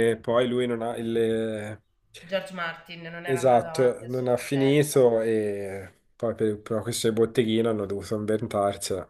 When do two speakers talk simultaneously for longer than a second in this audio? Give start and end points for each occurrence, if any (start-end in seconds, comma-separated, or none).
3.3-5.1